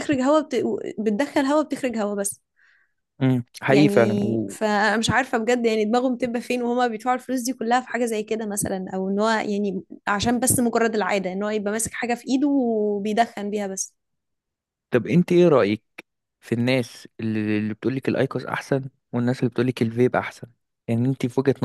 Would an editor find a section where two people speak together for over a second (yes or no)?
no